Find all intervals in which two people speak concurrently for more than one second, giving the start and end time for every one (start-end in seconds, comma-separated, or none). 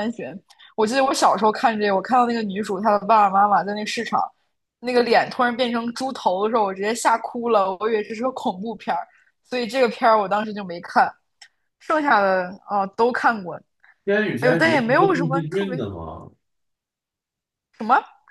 14.4-15.8